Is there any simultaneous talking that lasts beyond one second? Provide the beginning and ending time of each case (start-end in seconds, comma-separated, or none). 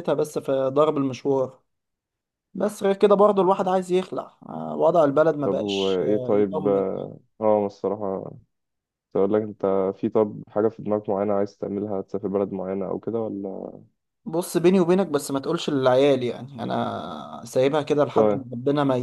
5.4-6.8